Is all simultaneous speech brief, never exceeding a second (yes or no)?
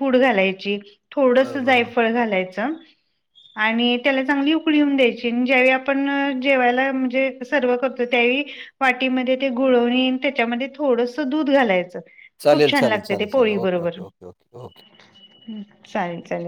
no